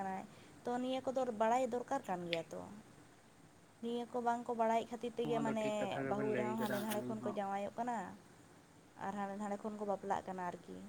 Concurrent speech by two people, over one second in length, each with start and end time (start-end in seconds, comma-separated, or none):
5.2-7.4